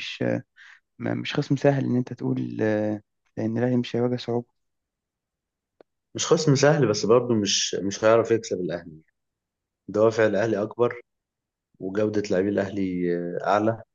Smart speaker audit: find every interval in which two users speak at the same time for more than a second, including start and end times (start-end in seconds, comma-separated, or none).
none